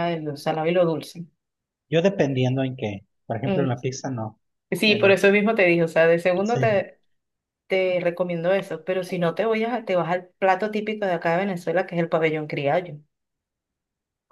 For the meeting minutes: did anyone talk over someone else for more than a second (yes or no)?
no